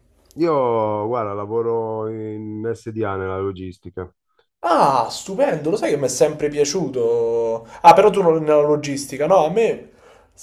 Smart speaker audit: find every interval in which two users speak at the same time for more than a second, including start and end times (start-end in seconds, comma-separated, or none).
none